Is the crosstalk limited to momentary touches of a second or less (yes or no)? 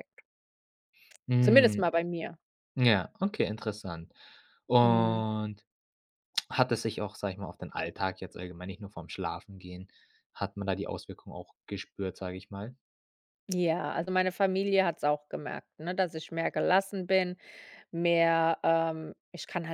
yes